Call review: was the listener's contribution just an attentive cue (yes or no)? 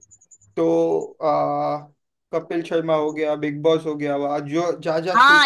no